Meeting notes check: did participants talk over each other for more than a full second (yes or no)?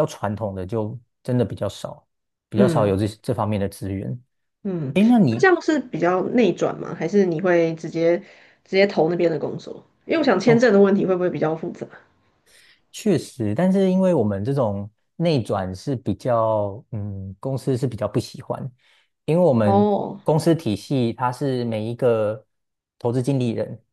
no